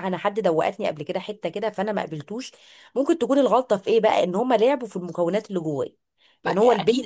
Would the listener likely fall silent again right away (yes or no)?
no